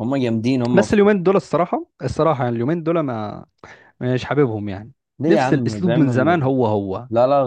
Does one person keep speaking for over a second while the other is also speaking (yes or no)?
yes